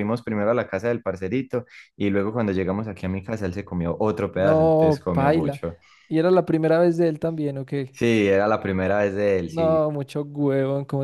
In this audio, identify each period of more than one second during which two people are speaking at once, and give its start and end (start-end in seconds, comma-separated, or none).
4.3-5.6